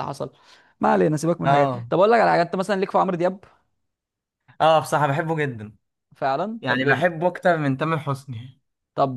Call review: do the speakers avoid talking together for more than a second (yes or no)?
yes